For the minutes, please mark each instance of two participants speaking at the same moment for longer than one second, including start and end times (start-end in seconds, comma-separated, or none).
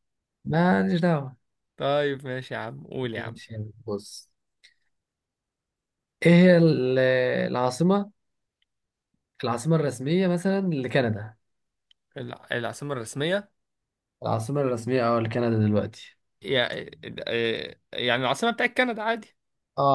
none